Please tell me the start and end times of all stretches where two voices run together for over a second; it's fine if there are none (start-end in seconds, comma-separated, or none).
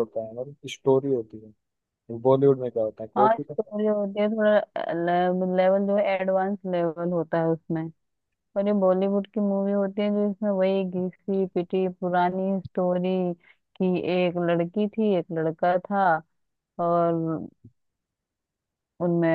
none